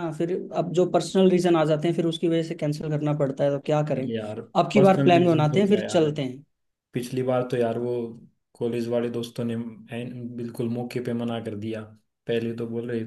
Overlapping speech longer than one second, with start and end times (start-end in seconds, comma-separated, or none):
4.8-6.1